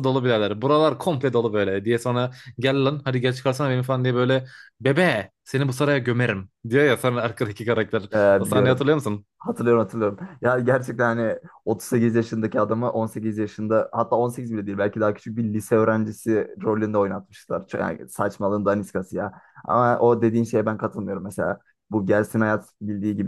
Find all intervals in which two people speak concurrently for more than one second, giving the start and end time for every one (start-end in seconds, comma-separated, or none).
none